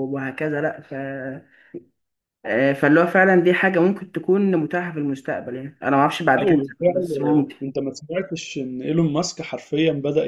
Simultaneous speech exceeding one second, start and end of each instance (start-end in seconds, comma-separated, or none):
6.3-7.5